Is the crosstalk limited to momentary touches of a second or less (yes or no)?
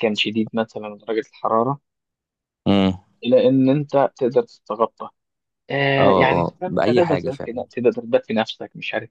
no